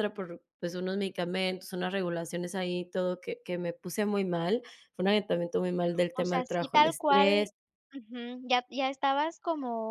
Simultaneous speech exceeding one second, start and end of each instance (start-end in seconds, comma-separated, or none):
6.2-7.5